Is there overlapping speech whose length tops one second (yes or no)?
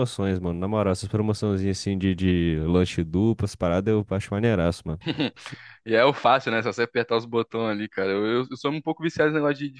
no